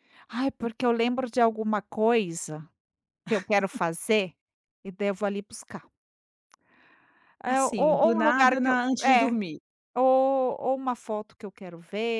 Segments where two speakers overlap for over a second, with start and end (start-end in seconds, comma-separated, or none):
7.5-9.3